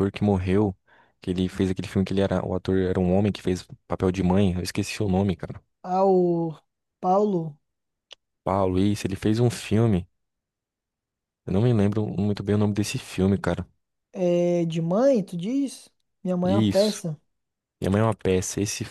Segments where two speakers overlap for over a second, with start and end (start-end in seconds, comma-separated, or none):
none